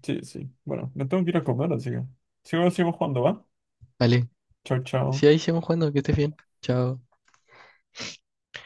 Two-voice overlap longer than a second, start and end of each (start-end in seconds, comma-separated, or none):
none